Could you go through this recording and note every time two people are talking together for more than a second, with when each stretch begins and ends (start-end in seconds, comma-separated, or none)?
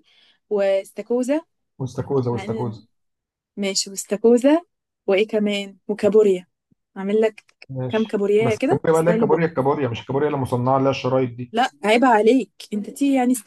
7.9-9.5